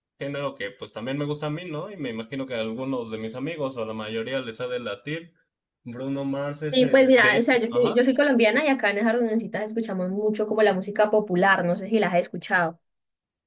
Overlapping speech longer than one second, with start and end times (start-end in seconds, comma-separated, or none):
6.7-8.0